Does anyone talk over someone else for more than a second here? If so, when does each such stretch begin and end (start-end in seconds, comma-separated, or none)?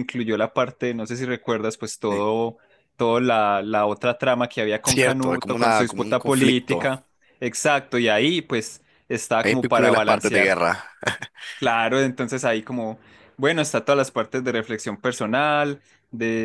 4.8-6.9, 9.4-10.6